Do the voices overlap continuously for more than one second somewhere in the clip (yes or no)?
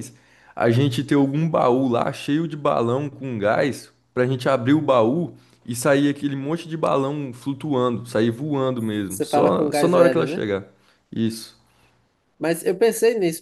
yes